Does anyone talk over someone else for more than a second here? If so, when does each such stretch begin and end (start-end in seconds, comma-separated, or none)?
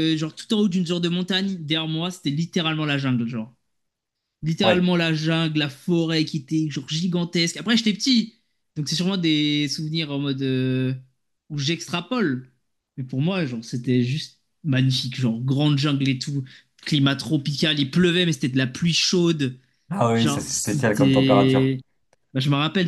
20.1-21.7